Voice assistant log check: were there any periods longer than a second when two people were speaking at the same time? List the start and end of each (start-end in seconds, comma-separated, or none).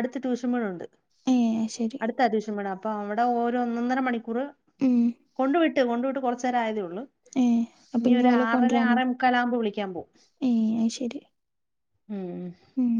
none